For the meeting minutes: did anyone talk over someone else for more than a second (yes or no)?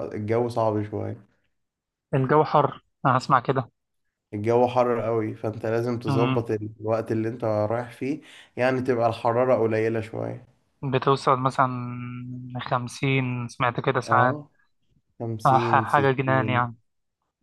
yes